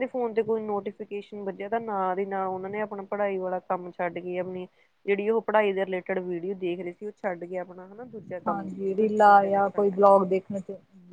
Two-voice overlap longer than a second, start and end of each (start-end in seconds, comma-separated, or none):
8.5-10.1